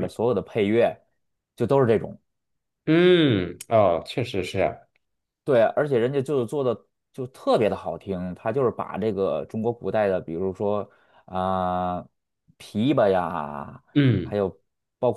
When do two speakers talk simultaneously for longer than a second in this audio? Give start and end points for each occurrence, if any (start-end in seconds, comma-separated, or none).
none